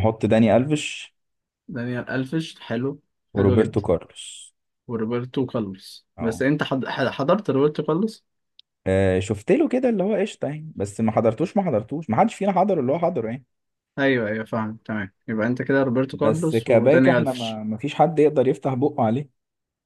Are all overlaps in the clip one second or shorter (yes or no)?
no